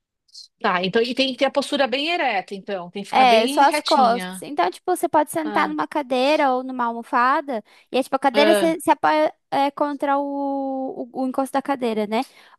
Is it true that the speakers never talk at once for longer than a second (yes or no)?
no